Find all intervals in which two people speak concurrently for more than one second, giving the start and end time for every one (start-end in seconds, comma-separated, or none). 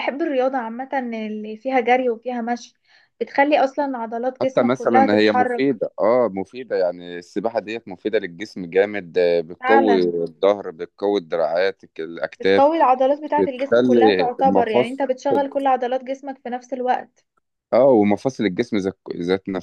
4.4-5.6, 13.4-15.0